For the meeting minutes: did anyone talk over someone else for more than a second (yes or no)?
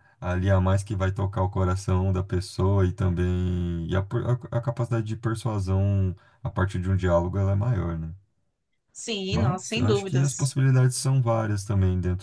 yes